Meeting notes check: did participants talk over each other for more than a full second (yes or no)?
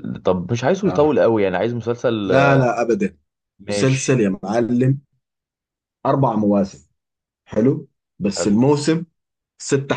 no